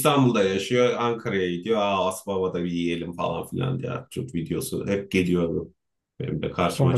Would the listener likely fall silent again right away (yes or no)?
no